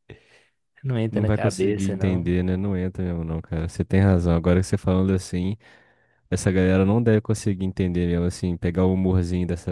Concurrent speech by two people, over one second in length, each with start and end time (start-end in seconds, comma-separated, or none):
1.1-2.3